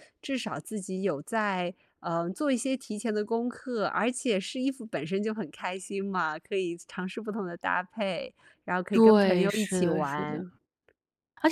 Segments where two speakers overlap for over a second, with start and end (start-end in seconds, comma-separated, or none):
8.9-10.4